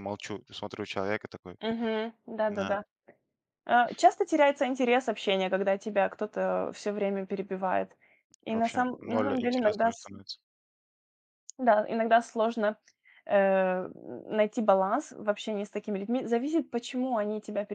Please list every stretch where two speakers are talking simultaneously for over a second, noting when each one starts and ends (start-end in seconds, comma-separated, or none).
8.5-10.1